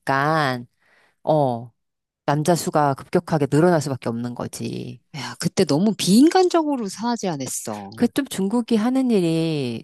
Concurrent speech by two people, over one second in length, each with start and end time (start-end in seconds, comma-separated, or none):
none